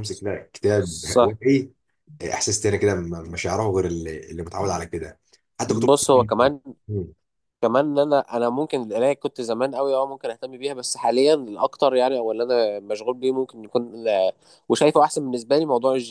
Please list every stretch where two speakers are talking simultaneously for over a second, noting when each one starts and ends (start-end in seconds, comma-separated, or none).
none